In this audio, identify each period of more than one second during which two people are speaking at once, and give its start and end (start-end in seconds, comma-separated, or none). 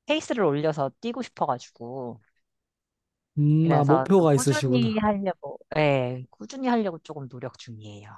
3.6-5.0